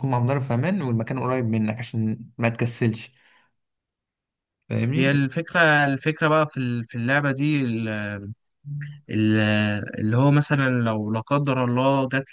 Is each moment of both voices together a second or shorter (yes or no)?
yes